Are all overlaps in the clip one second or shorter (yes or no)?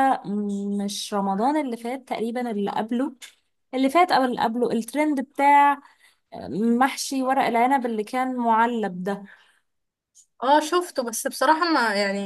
yes